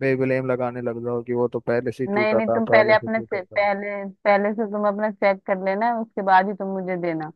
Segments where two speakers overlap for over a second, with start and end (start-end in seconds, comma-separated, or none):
2.1-3.7